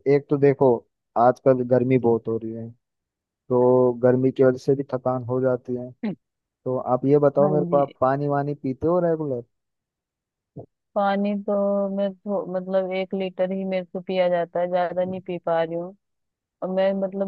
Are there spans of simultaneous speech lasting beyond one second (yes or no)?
no